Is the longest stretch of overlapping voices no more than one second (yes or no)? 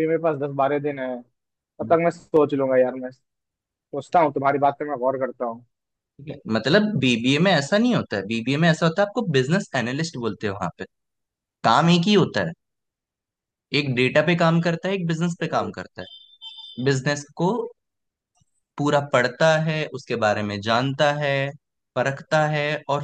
yes